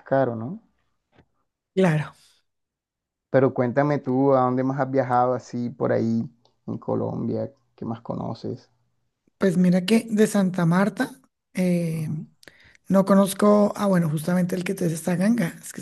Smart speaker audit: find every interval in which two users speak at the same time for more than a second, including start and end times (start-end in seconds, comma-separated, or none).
none